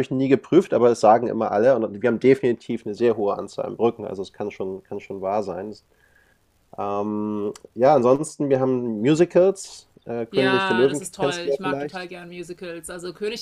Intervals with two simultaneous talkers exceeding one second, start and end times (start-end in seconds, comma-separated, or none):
10.3-12.1